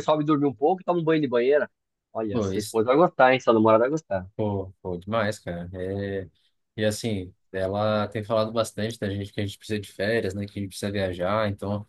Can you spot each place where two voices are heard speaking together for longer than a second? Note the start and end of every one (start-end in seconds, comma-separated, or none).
none